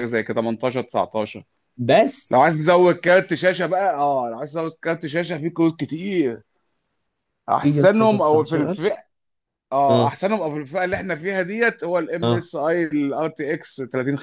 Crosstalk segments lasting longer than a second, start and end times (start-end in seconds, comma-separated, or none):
7.6-8.9